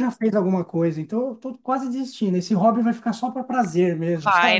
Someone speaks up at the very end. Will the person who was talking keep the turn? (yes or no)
no